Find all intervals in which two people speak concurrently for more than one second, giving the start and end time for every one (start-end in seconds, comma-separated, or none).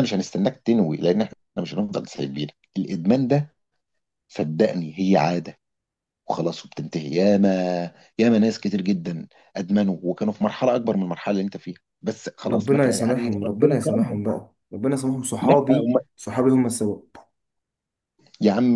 12.5-14.2